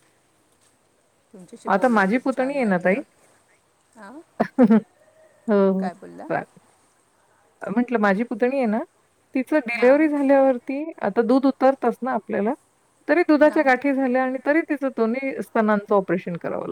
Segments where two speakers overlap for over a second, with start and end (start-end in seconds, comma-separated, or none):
1.7-2.9